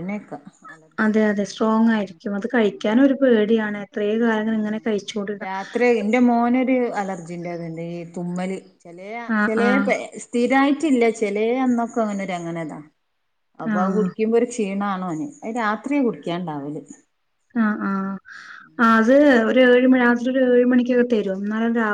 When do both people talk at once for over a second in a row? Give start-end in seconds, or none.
none